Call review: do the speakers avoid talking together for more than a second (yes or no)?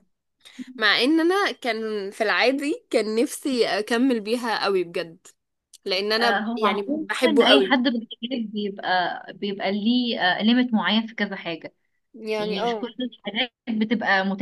no